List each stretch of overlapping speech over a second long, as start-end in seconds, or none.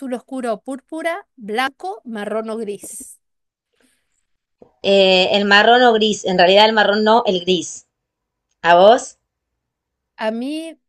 none